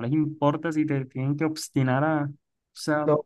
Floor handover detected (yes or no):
no